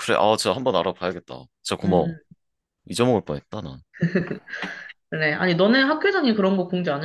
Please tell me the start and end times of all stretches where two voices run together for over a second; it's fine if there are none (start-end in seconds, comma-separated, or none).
none